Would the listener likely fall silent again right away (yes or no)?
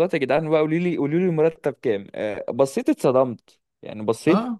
yes